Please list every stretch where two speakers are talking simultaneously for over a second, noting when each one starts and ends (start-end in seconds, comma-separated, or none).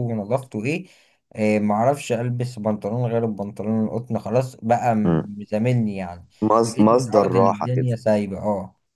6.7-7.9